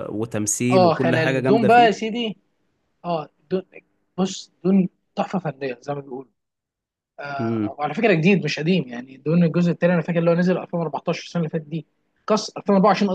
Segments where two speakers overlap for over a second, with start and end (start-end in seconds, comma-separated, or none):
0.7-2.1